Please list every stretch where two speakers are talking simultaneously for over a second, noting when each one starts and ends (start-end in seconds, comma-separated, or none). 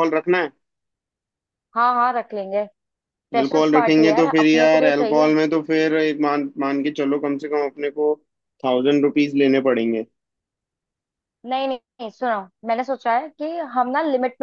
3.4-5.3